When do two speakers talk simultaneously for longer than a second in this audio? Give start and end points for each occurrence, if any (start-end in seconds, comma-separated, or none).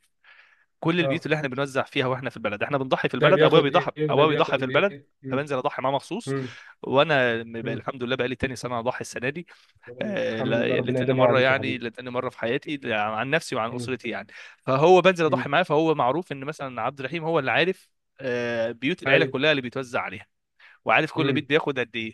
3.2-5.5, 10.0-11.8